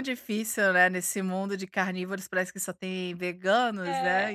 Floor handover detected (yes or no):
no